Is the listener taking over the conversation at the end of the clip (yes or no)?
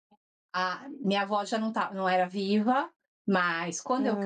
no